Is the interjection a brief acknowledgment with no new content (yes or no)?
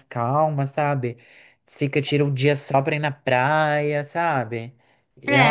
no